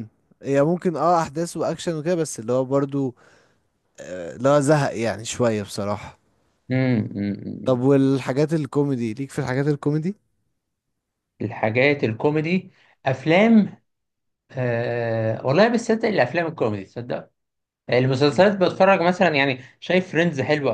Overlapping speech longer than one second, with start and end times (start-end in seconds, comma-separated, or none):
none